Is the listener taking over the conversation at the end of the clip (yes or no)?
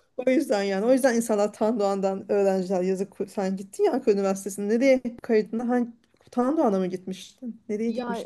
yes